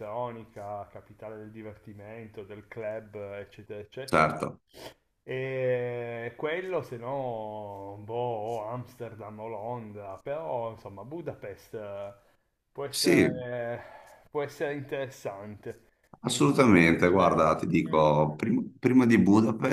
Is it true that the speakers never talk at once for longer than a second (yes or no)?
no